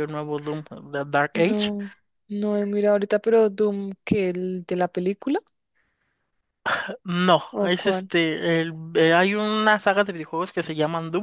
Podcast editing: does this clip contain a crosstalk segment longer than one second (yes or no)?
no